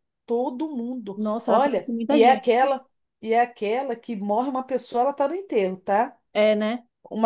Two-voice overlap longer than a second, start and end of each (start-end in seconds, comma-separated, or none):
1.1-2.7